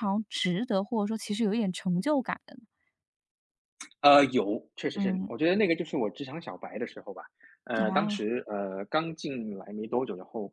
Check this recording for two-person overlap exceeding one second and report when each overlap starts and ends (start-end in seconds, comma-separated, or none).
none